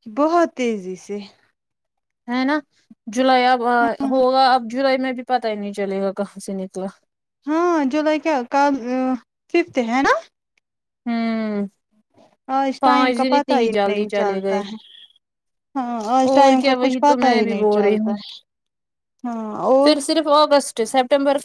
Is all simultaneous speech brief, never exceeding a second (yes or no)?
no